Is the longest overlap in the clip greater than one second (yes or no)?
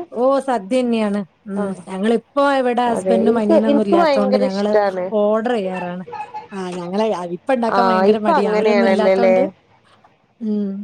yes